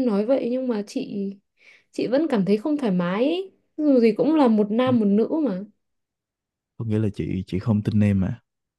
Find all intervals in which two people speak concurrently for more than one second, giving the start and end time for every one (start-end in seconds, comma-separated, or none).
none